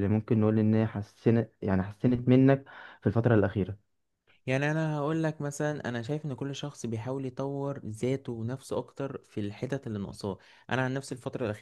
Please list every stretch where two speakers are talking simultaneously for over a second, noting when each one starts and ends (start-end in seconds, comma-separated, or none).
none